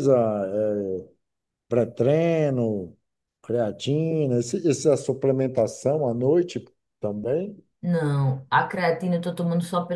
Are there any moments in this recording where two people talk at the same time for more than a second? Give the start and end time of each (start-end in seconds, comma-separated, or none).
none